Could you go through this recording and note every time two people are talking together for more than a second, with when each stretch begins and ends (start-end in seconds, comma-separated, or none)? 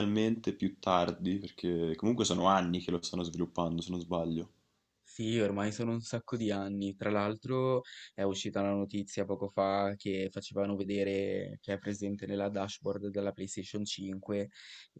none